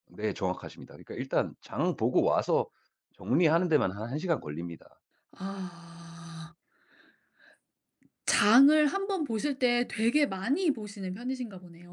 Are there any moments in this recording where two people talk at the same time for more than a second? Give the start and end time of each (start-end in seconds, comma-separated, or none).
none